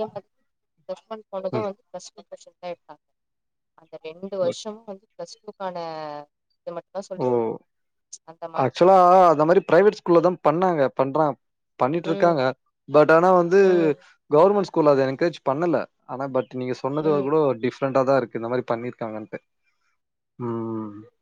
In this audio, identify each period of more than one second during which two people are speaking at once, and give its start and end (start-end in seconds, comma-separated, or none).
none